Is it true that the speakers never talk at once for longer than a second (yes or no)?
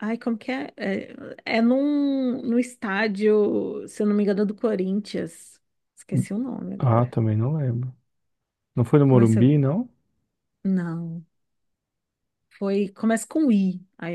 yes